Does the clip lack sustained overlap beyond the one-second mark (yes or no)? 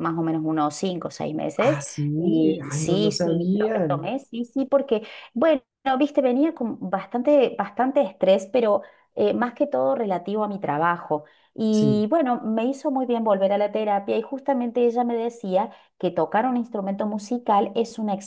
no